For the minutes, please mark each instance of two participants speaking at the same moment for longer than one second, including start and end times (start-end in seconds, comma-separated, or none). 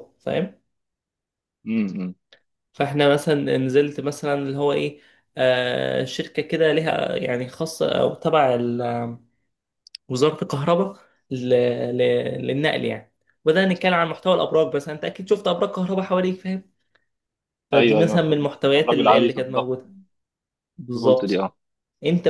17.7-19.8